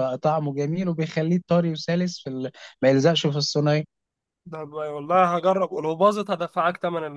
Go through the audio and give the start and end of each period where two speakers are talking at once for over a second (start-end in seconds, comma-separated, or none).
none